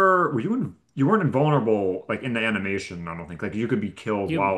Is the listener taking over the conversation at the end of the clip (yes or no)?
yes